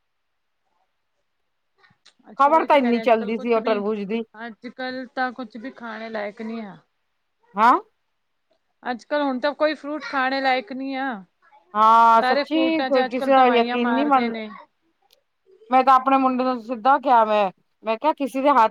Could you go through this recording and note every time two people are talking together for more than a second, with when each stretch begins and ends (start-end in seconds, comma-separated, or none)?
2.4-3.8, 12.2-14.4